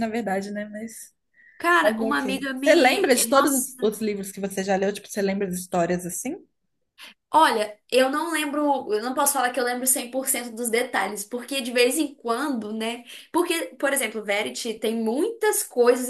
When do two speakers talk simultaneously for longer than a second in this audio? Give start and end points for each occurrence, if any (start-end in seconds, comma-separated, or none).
1.8-3.9